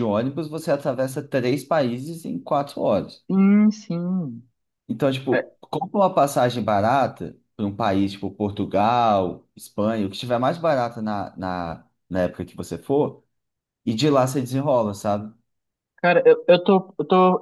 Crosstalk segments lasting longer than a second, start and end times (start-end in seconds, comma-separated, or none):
none